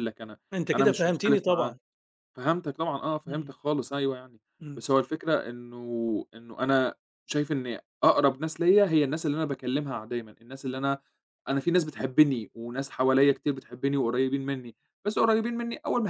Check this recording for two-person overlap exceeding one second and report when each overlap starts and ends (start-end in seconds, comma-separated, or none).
0.5-1.8